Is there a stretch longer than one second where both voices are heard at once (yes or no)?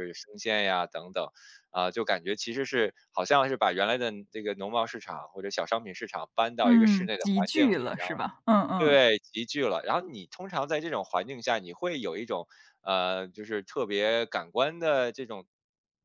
yes